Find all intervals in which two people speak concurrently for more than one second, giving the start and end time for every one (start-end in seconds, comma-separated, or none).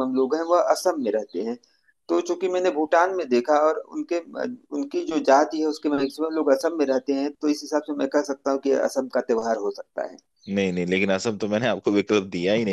none